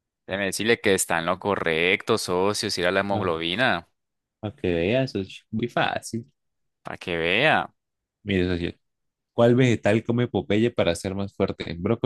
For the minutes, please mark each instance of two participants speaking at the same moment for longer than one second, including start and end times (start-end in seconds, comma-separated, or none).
none